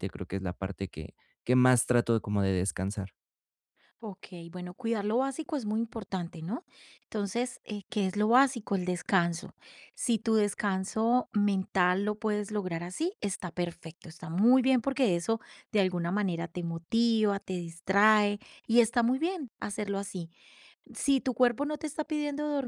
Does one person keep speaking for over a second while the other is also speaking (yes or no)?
no